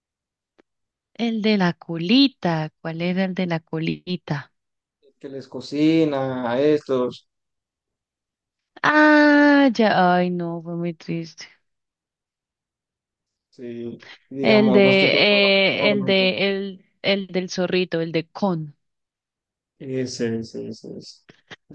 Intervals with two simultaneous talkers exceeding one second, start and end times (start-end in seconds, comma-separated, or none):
14.4-16.3